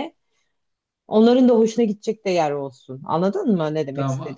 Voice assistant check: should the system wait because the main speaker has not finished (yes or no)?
no